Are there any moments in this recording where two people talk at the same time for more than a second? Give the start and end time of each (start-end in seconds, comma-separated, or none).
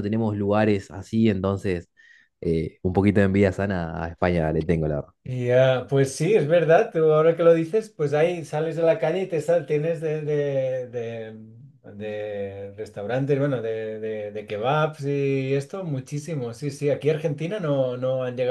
none